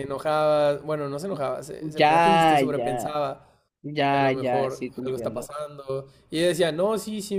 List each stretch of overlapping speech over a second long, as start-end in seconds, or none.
1.9-3.2, 4.1-5.5